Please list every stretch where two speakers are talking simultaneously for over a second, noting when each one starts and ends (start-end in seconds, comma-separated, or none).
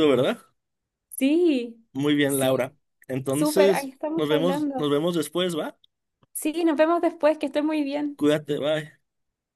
3.3-4.9